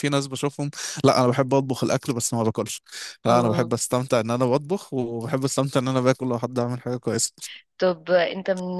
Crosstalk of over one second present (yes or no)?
no